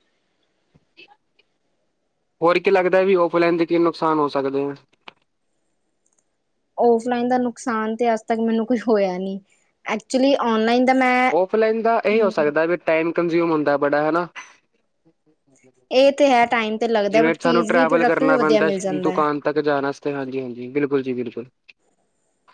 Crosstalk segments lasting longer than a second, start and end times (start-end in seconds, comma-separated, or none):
17.1-19.2